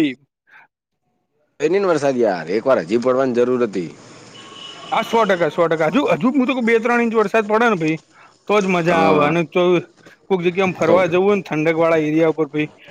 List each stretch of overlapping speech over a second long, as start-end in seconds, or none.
none